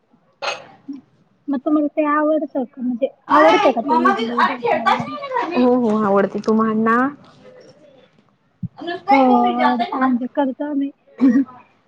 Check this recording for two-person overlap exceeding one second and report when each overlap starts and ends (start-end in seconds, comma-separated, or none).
3.9-5.1